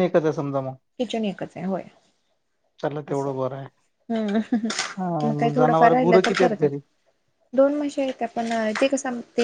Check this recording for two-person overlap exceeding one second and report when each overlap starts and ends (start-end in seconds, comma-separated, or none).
5.0-6.7